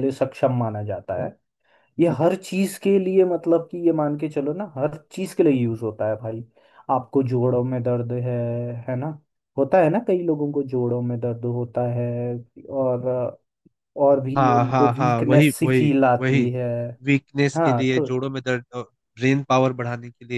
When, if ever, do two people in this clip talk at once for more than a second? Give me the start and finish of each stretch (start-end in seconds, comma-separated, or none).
14.3-16.4